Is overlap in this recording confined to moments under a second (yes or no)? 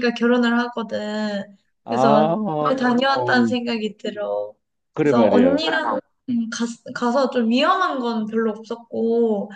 no